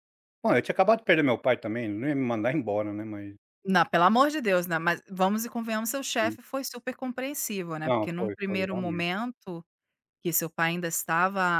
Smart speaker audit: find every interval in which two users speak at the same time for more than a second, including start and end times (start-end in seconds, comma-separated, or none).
7.8-9.1